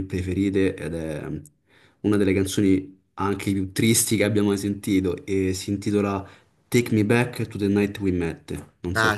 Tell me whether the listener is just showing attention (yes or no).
no